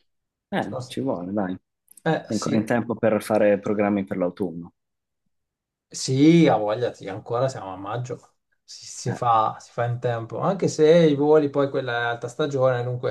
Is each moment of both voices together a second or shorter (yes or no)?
yes